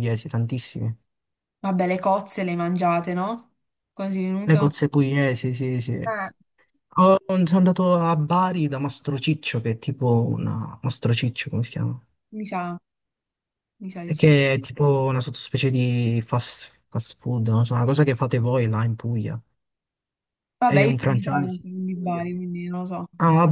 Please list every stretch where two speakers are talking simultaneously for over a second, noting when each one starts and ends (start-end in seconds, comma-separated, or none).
20.6-22.2